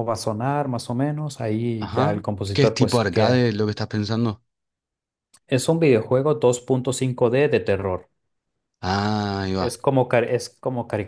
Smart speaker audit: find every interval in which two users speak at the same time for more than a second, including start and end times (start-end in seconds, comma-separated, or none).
1.8-3.5